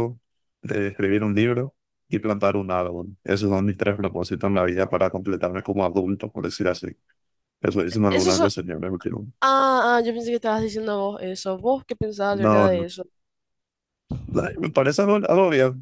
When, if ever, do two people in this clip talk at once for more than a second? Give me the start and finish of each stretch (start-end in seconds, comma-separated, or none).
none